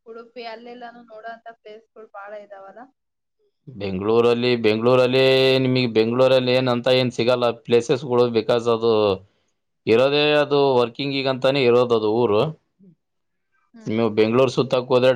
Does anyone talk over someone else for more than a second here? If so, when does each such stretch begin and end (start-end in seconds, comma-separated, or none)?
none